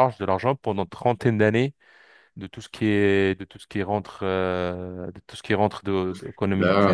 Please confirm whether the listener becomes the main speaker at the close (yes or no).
no